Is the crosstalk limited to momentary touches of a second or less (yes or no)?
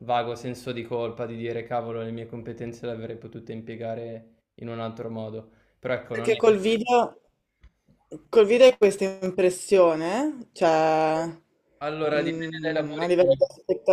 no